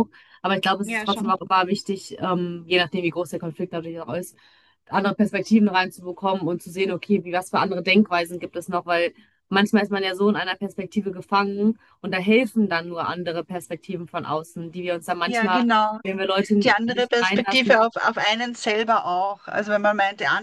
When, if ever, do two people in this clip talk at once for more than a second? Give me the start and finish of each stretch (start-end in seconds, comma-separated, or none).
16.6-17.9